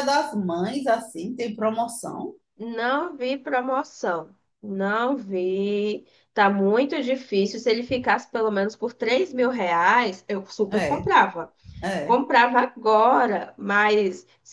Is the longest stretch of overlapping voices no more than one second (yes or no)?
yes